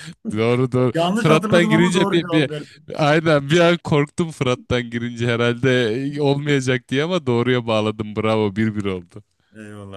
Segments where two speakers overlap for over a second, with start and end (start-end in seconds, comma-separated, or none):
0.9-2.5